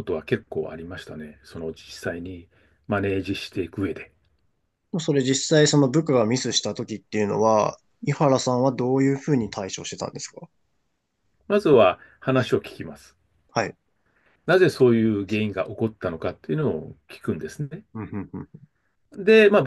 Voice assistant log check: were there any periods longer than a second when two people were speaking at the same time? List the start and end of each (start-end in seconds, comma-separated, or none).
none